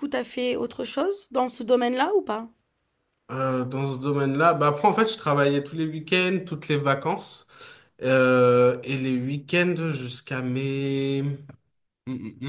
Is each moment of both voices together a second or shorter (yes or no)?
yes